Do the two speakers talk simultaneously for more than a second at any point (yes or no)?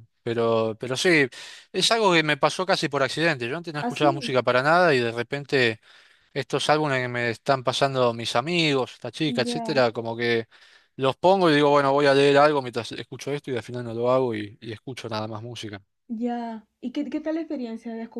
no